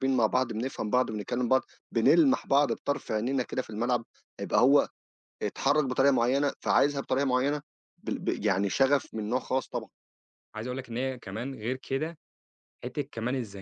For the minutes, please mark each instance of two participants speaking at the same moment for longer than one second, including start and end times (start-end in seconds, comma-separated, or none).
none